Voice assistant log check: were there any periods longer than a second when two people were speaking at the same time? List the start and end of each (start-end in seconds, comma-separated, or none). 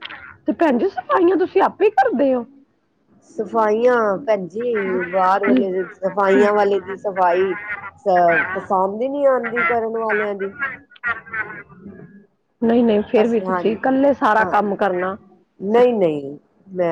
none